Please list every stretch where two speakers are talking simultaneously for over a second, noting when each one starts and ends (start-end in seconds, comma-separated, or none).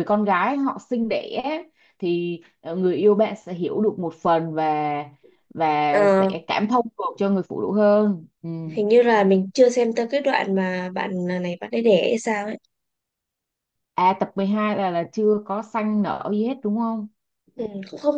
none